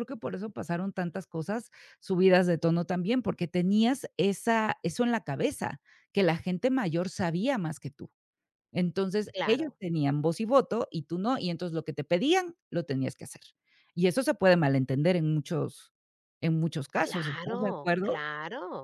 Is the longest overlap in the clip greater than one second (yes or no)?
yes